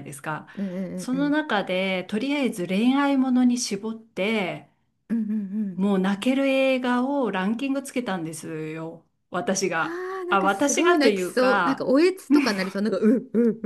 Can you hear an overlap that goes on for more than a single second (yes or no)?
yes